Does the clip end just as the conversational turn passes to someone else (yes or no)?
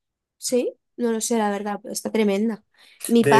yes